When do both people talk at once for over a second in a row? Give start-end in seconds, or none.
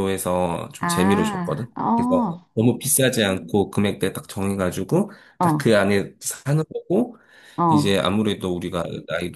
0.8-2.5